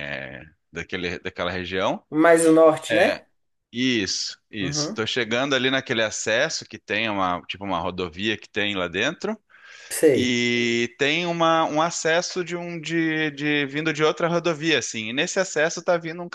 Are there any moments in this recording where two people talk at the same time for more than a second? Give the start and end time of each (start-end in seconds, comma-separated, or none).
none